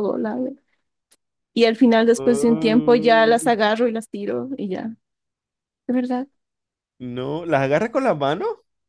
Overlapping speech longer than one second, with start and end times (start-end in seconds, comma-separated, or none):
2.2-3.5